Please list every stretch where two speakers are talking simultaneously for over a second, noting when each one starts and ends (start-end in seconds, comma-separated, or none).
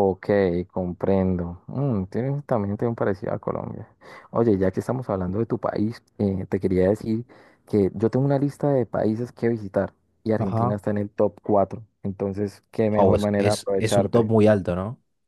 12.9-14.3